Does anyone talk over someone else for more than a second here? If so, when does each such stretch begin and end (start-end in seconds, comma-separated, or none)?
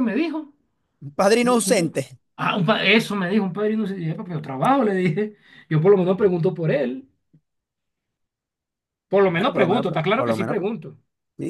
9.3-10.6